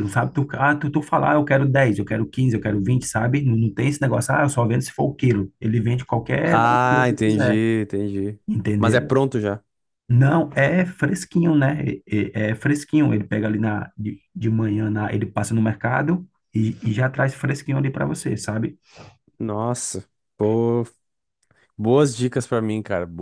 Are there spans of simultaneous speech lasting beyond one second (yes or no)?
yes